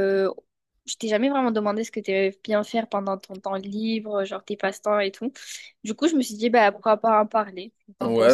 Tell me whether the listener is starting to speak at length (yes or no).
yes